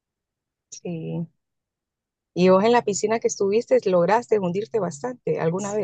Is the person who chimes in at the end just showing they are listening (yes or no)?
no